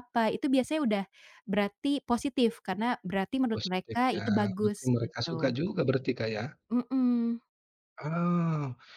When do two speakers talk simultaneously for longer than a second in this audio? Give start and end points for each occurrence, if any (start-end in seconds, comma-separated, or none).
3.5-5.5